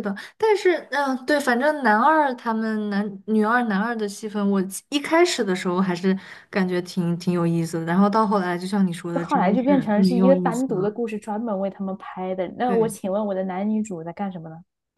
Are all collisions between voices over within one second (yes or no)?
no